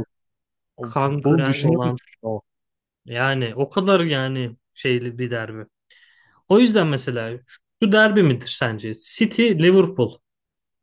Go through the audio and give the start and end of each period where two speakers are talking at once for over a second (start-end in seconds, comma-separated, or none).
0.8-2.0